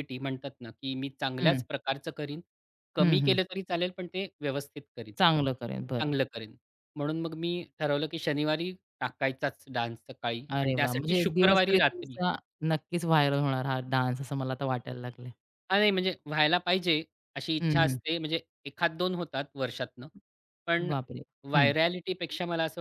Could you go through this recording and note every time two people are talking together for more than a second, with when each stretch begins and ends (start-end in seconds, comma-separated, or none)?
10.5-12.2